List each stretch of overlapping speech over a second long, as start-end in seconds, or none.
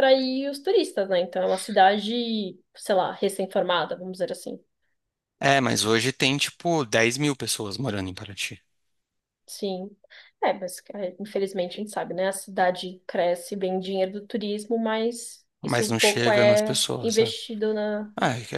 15.6-17.4